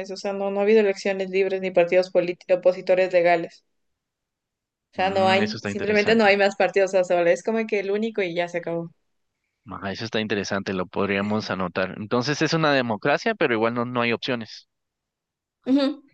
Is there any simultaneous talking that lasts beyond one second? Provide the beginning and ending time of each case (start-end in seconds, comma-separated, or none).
4.9-6.3